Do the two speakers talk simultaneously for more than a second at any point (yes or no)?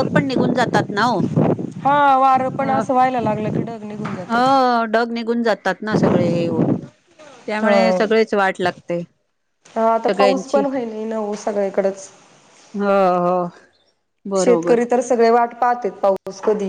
no